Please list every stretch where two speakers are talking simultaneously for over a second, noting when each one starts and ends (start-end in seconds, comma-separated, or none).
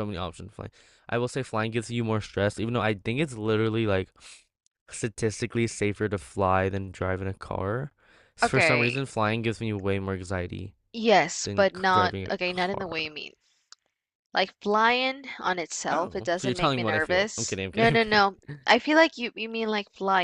11.4-12.9, 15.9-18.2